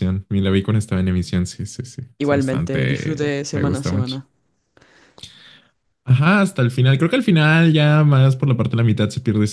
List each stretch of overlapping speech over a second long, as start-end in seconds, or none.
2.2-4.2